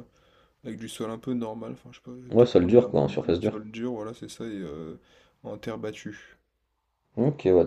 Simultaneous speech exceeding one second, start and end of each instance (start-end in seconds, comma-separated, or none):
2.3-3.6